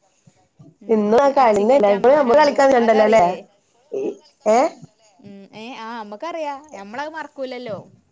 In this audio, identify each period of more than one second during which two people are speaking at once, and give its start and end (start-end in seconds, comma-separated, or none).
0.9-3.2